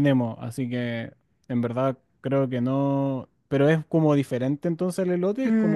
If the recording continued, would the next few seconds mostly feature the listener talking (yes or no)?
yes